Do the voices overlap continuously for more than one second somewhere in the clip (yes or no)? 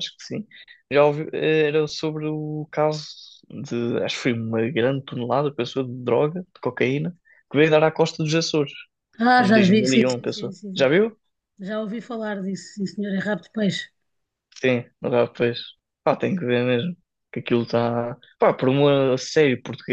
yes